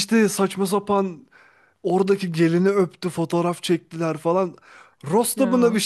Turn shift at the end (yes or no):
no